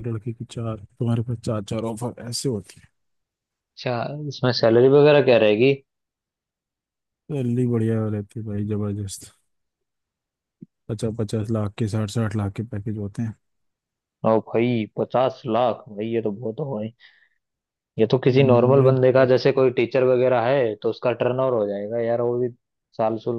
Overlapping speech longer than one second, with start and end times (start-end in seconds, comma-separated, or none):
none